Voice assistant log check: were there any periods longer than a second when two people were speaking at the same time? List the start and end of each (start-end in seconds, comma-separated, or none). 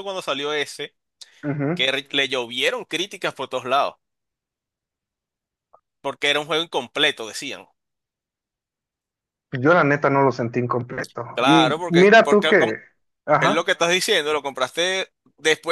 11.3-12.7